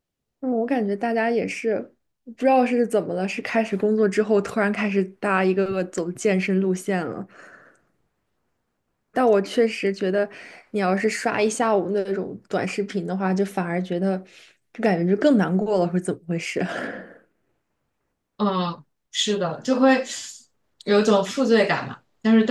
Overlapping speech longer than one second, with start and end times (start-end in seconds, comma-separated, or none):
none